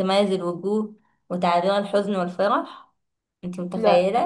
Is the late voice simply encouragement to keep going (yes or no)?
yes